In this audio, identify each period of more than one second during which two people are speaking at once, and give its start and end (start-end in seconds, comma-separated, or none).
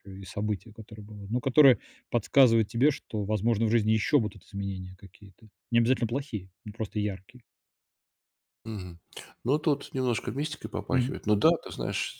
none